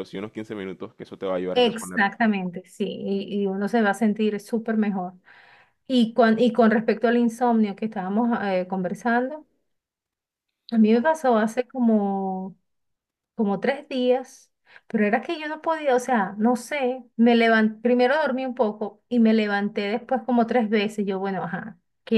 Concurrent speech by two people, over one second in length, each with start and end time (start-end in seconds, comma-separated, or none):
none